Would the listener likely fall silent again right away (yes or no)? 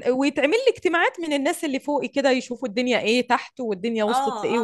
no